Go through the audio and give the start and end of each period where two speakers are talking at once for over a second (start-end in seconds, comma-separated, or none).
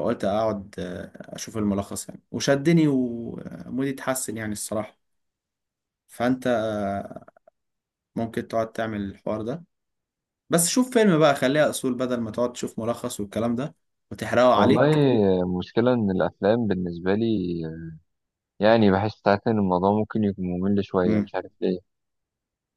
none